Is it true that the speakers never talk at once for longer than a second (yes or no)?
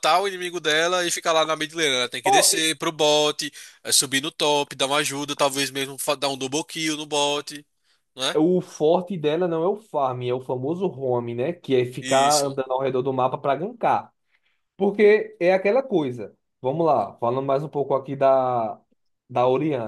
yes